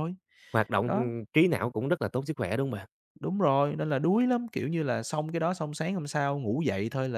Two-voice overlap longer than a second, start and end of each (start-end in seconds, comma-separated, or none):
none